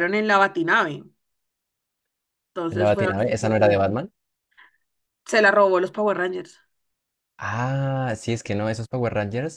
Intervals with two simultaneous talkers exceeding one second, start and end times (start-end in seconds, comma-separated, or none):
2.7-4.0